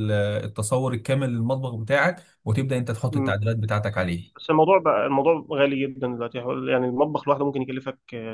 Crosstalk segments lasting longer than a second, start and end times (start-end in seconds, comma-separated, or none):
none